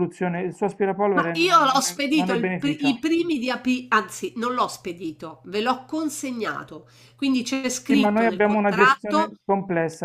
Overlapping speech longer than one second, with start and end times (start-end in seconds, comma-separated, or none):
1.1-3.0, 7.8-9.3